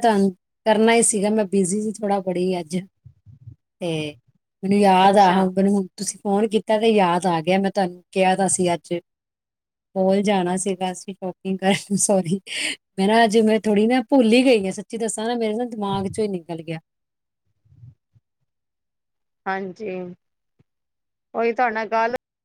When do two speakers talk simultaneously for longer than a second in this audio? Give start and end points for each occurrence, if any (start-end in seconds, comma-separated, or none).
none